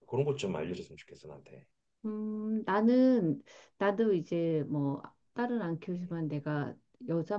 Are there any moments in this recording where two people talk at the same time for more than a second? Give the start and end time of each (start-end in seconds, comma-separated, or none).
none